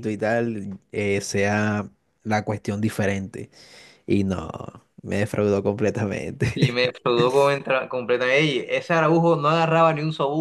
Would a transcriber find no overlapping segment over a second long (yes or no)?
yes